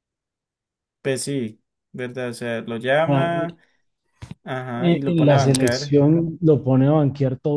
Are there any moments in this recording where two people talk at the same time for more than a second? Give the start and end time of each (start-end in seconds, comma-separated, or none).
4.8-6.0